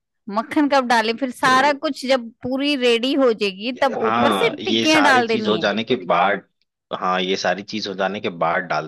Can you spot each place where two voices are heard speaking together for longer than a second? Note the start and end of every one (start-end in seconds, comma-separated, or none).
4.0-5.7